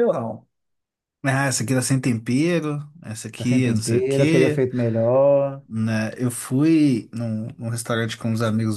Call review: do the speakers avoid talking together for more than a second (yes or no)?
no